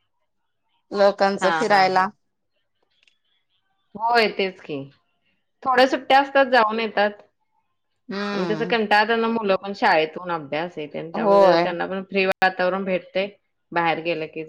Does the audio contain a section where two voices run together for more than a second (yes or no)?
no